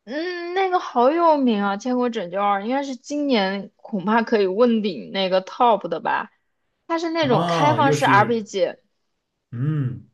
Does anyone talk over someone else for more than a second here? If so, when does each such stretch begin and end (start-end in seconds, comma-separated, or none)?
7.2-8.4